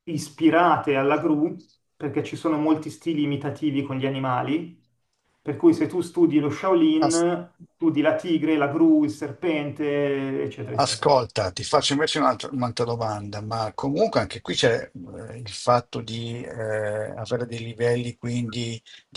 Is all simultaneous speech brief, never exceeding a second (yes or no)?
yes